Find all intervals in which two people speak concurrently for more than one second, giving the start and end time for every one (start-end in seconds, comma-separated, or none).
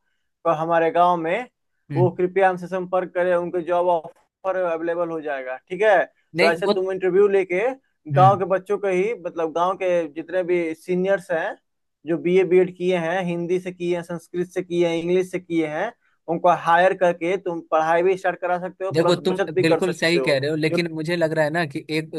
18.9-20.8